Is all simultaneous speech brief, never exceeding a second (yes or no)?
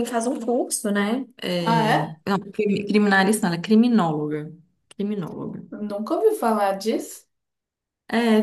yes